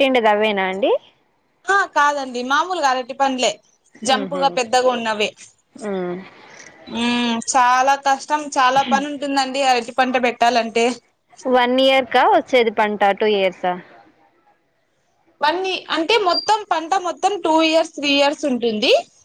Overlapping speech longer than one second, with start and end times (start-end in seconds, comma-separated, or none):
none